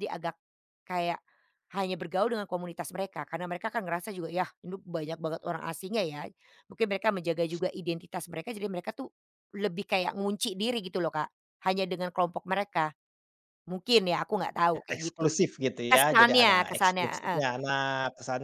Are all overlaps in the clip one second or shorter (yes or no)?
no